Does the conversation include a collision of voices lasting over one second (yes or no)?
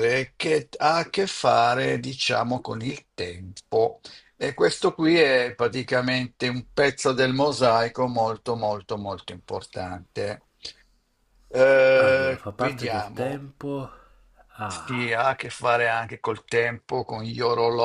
yes